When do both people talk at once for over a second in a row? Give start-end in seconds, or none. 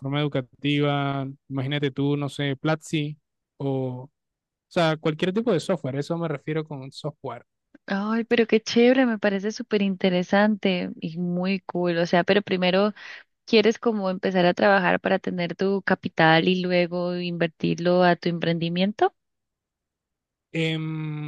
none